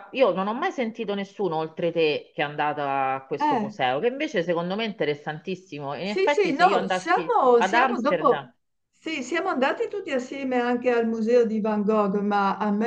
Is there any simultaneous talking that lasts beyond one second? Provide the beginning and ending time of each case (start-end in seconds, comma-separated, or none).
6.0-8.5